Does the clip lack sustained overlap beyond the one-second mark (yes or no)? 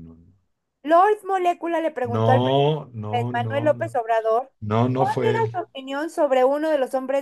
no